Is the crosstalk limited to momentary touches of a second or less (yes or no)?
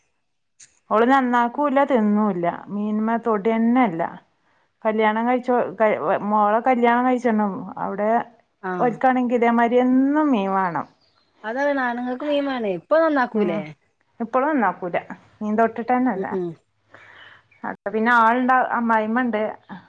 yes